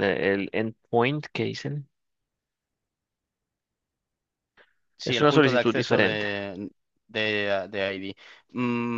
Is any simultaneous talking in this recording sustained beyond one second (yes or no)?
yes